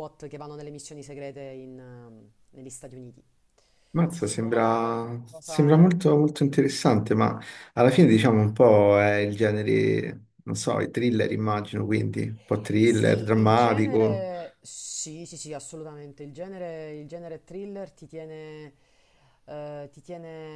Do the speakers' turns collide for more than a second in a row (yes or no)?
yes